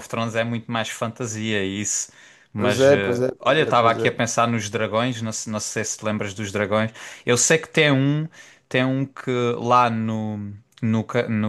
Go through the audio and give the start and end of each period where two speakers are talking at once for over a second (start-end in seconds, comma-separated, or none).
2.6-4.1